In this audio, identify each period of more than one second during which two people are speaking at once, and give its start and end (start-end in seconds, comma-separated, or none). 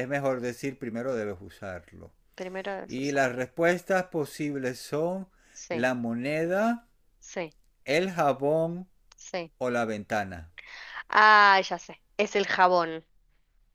none